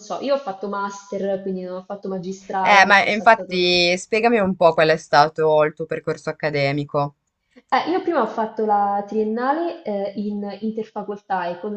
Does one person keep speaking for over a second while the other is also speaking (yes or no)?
yes